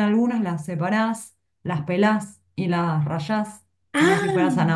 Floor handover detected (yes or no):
no